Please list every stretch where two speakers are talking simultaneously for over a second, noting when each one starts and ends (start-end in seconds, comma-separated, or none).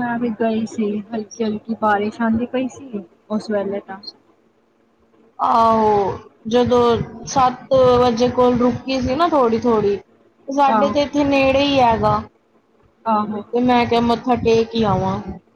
none